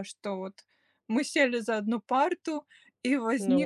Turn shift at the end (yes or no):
no